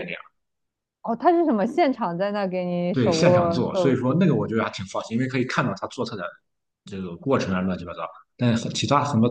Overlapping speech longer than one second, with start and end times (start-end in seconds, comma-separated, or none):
2.9-4.3